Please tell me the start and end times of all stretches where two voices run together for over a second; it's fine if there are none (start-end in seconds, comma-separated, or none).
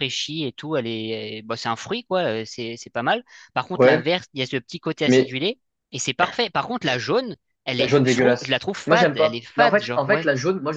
7.8-10.3